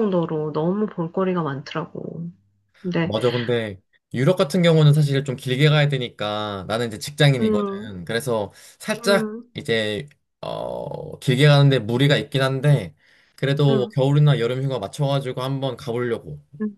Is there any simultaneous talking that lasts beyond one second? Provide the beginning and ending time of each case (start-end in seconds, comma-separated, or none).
none